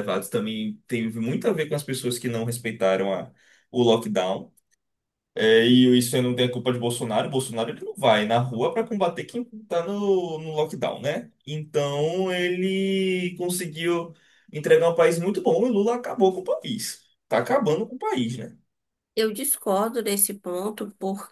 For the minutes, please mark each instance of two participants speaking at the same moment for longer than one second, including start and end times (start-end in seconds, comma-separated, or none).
none